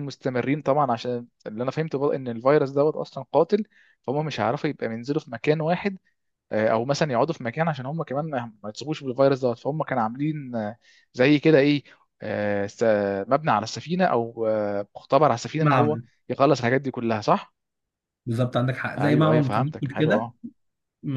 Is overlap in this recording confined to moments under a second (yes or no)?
no